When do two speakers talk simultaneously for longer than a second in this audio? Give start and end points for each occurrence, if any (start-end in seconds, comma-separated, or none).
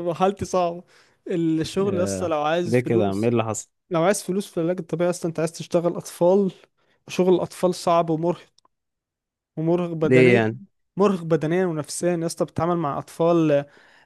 1.9-3.3